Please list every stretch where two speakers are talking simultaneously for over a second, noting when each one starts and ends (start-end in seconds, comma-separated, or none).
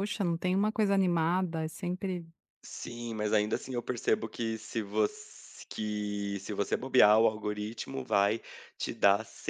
none